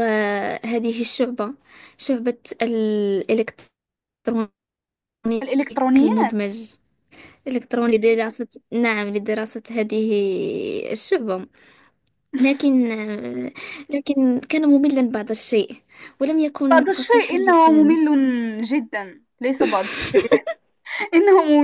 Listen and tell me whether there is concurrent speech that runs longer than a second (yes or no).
yes